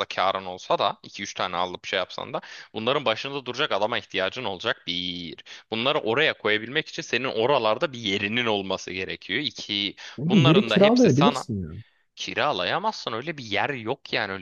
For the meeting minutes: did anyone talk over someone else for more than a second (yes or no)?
yes